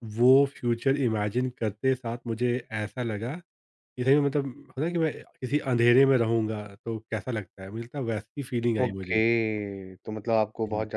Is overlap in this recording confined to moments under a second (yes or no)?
yes